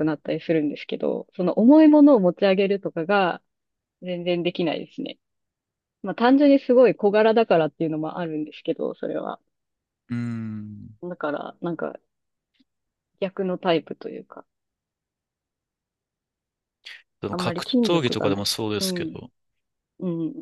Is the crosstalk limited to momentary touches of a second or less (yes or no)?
no